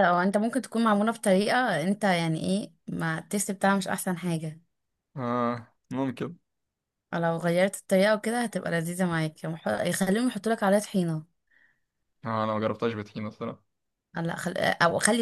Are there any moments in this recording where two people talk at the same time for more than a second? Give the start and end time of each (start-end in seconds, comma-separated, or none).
none